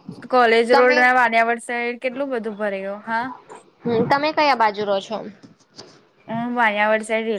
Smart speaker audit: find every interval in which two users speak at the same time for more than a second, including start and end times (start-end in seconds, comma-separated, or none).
none